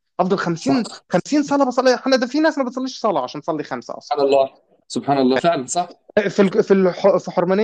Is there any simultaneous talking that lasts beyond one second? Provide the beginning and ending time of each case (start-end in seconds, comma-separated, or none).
none